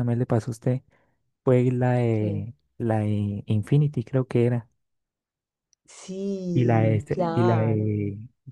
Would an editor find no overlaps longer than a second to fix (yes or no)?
no